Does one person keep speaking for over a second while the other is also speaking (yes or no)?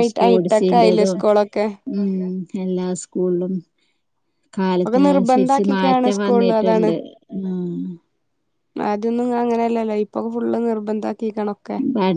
yes